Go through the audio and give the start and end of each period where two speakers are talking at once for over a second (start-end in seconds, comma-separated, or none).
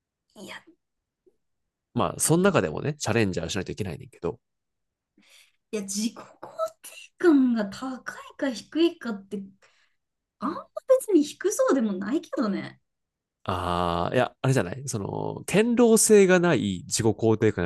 none